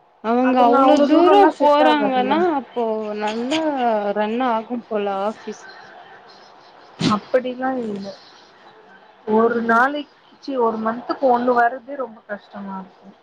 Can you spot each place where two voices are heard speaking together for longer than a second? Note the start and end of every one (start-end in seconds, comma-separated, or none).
0.5-2.4